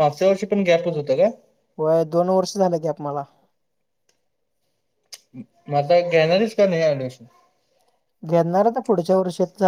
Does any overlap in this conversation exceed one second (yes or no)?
no